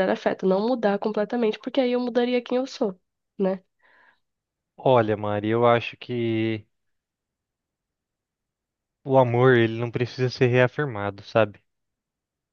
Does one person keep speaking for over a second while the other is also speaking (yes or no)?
no